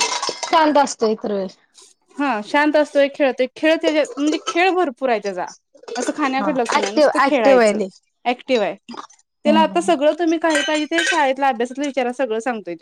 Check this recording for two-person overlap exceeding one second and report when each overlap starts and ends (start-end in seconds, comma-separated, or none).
6.4-7.8